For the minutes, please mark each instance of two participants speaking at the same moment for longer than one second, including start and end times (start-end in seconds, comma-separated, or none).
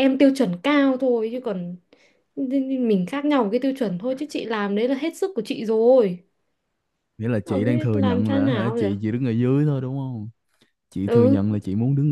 7.5-8.9